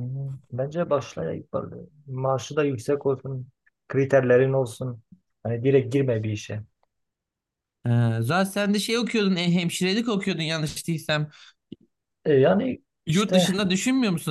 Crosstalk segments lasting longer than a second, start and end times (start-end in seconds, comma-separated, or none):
none